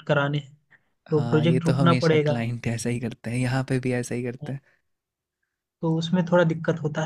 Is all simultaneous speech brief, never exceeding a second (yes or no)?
no